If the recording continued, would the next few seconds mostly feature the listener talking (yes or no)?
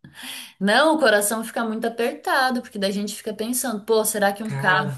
no